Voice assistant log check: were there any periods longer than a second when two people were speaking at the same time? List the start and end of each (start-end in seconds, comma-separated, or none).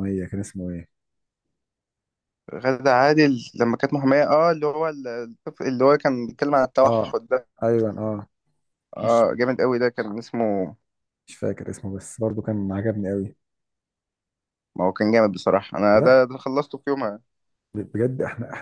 none